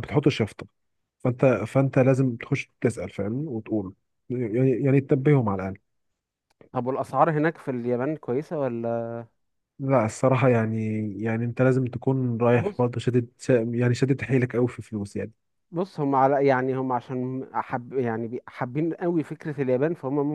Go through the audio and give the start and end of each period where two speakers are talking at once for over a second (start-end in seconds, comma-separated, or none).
none